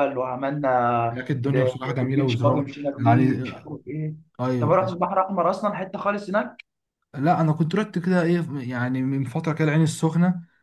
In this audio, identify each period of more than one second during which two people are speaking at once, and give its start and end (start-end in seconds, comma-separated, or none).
1.1-3.7